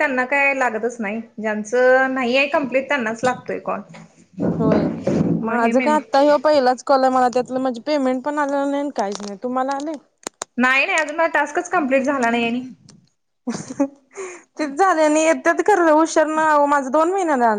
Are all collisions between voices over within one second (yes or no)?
yes